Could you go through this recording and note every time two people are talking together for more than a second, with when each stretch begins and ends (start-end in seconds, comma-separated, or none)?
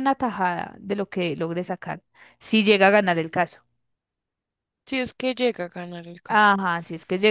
none